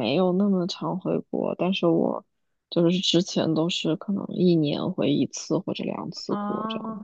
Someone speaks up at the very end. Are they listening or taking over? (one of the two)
taking over